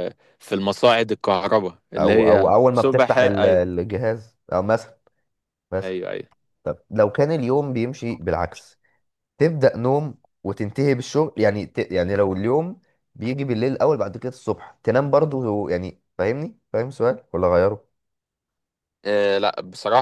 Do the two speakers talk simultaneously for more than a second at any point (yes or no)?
yes